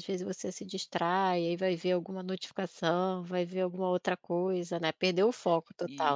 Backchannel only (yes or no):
no